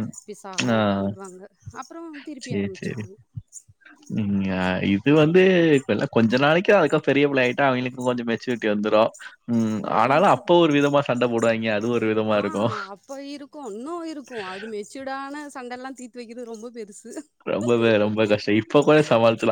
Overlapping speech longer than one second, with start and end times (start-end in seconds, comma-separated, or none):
none